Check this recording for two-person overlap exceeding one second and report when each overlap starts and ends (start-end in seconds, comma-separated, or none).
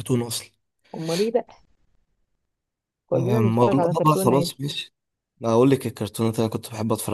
3.1-4.5